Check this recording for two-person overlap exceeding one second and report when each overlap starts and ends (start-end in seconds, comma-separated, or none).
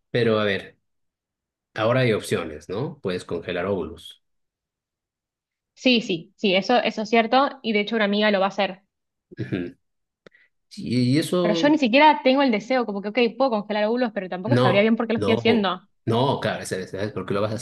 14.4-15.8